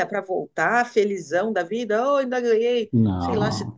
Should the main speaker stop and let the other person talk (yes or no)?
no